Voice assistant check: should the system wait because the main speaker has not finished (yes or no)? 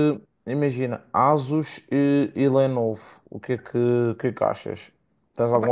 no